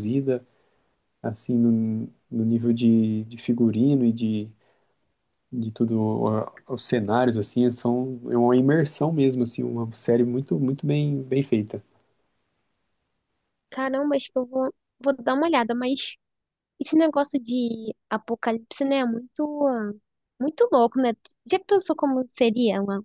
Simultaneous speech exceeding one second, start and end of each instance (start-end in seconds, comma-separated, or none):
none